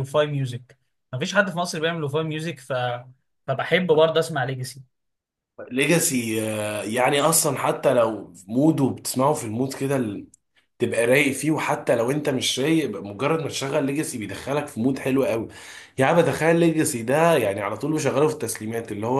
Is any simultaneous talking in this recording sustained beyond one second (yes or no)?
no